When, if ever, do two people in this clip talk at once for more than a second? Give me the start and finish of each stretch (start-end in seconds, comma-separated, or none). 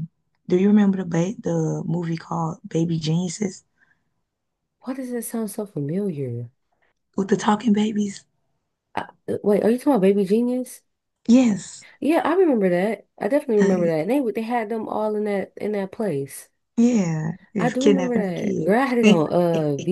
17.6-19.2